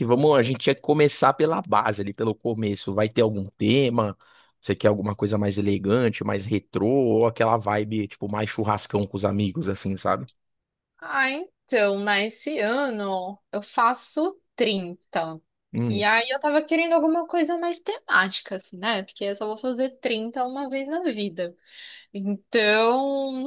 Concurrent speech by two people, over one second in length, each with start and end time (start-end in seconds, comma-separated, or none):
none